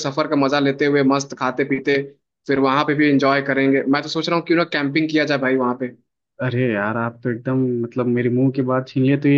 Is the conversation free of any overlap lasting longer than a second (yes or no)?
yes